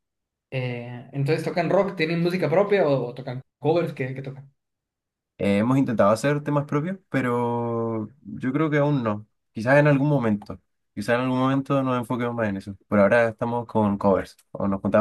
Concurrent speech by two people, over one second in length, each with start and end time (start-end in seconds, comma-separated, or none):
none